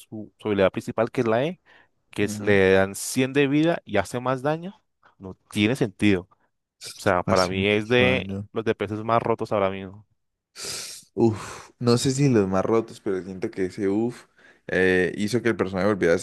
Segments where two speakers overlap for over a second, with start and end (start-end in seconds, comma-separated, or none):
7.2-8.5